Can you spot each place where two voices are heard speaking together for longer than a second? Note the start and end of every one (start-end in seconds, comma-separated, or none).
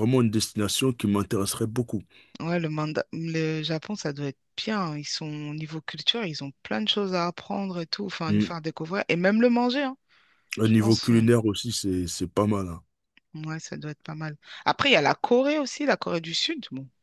none